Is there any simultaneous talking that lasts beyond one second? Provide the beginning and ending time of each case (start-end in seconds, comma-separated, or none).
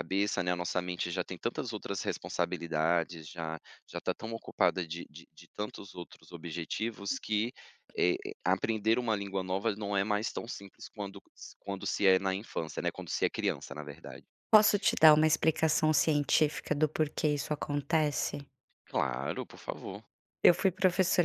none